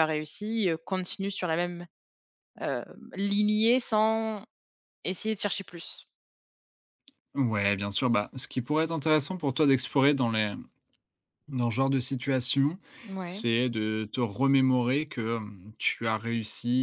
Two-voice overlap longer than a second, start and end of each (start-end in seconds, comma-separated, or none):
none